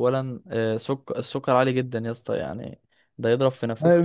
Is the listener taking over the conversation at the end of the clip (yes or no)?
yes